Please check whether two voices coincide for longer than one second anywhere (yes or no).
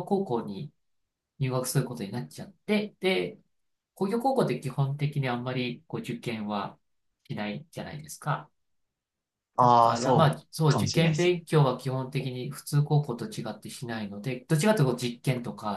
yes